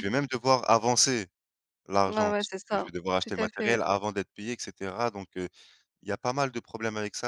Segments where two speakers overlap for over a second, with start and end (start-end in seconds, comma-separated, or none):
2.1-3.8